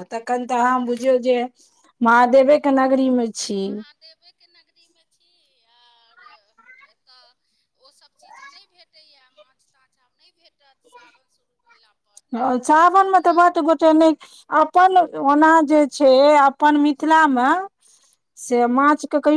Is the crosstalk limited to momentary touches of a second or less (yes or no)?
yes